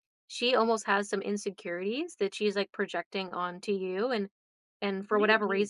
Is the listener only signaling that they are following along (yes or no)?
yes